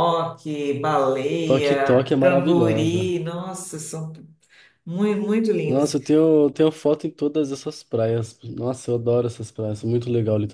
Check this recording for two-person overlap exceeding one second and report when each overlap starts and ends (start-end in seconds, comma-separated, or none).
1.4-3.1